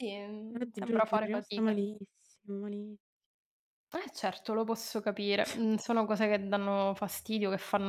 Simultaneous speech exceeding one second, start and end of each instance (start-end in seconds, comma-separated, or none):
0.5-1.8